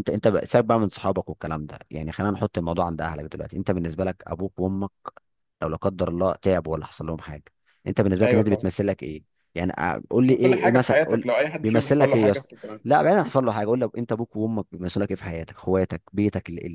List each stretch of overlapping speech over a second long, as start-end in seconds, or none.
10.2-12.5